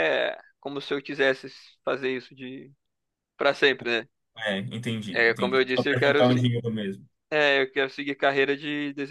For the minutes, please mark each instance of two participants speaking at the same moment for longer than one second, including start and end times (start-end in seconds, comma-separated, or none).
5.1-6.5